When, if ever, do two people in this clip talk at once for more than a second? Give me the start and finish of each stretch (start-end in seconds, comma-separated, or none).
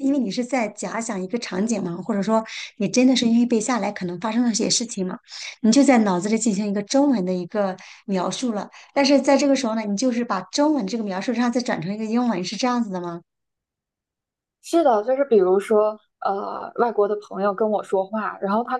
none